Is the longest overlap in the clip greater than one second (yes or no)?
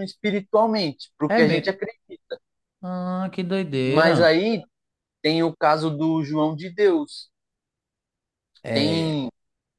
no